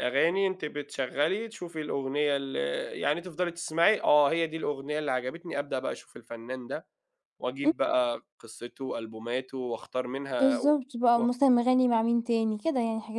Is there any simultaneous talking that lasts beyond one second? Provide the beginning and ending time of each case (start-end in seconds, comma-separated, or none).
none